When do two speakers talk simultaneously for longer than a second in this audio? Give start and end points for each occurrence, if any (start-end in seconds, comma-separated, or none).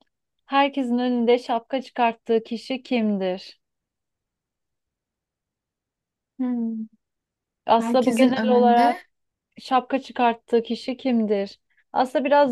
7.8-9.0